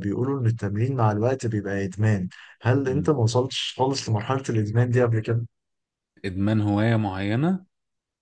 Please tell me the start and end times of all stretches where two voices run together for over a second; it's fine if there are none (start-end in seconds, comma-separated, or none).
none